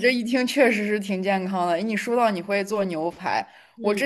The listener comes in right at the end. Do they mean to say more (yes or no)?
no